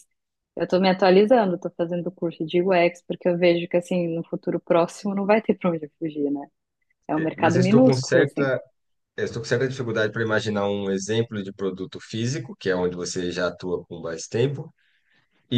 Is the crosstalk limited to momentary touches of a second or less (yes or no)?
no